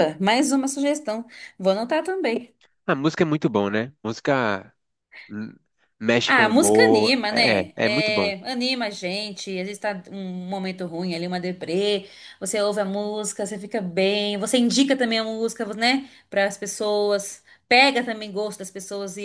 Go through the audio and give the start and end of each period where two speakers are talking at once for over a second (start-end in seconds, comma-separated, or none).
6.2-8.3